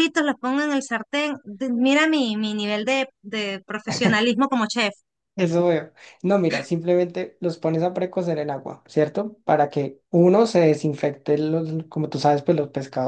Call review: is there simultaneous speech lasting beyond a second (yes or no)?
no